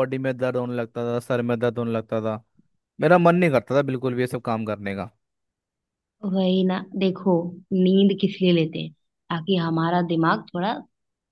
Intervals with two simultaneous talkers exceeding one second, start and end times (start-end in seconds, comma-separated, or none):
none